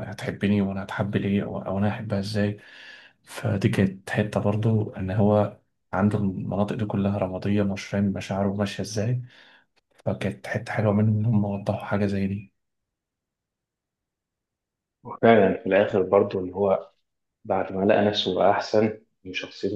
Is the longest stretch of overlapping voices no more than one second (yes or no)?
yes